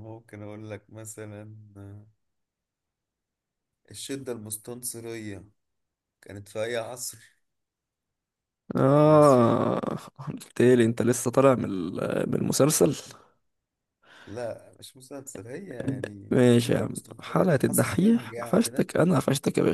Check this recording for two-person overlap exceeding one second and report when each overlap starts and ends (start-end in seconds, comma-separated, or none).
16.3-18.9